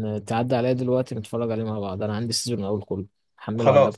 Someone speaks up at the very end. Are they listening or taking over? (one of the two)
taking over